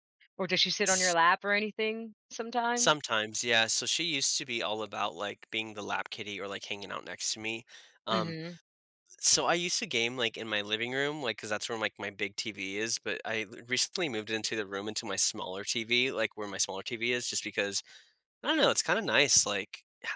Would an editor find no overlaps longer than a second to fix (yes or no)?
yes